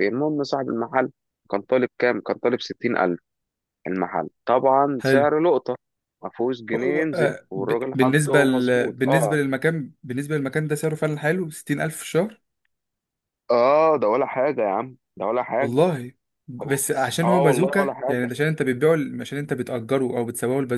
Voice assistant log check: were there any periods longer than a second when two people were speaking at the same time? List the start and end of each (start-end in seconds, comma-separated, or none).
7.1-9.3, 16.6-18.3